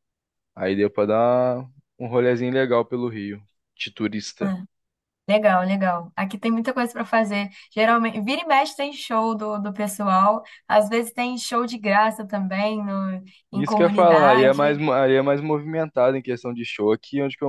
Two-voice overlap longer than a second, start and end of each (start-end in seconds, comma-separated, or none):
13.5-14.8